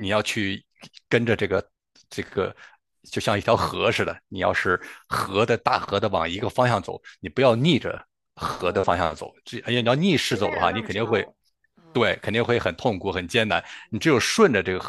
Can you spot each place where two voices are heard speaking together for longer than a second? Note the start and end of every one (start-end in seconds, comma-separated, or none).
9.7-11.3